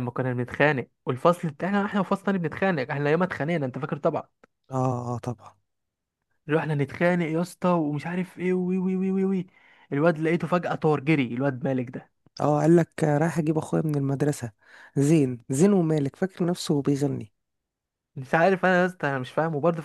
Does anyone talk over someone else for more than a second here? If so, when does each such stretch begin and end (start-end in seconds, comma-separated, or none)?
none